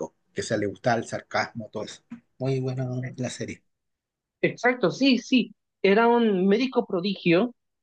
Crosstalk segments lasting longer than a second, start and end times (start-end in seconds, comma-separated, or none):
none